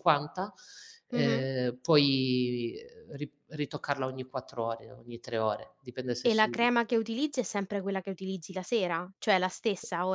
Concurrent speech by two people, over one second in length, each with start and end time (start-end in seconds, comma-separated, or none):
none